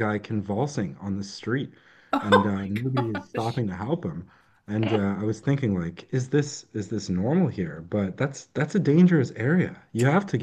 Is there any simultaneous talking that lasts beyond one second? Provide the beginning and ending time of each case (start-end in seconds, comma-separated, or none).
2.2-3.6